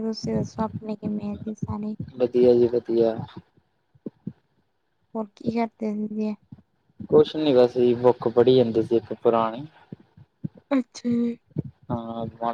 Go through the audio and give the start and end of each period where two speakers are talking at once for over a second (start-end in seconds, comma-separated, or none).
none